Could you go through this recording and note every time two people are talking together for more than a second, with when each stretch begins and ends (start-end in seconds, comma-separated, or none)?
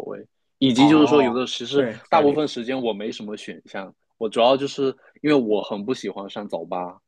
0.8-2.4